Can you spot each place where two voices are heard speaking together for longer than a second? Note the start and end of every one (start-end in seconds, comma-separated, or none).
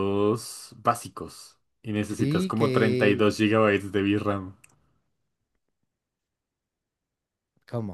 2.1-3.3